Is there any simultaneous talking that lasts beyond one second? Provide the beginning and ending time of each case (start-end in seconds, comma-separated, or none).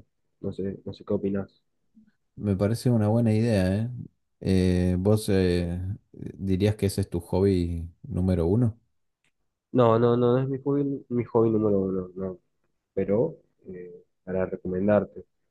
none